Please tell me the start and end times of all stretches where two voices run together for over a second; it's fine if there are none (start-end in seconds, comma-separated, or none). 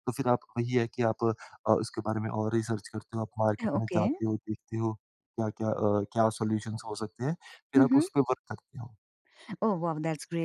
none